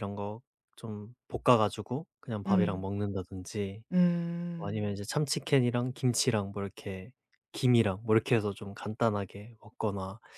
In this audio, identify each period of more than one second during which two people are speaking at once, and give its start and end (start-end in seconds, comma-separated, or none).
none